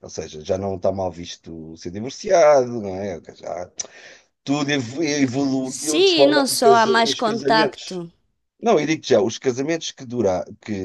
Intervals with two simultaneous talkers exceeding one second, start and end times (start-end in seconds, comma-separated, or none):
5.6-8.0